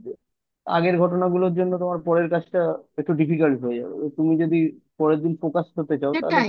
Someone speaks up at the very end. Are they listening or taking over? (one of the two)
taking over